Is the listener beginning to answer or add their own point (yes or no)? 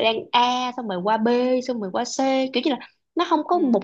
no